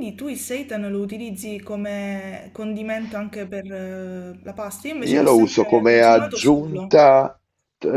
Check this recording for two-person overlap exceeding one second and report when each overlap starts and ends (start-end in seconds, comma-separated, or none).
5.1-7.0